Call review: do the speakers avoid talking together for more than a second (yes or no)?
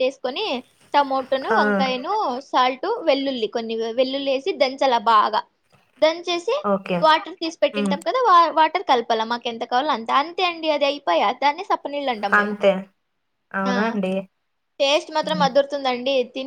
yes